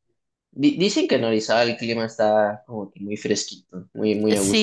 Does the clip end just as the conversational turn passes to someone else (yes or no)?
yes